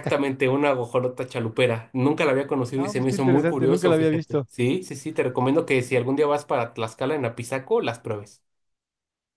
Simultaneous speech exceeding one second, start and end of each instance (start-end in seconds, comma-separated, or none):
2.8-4.5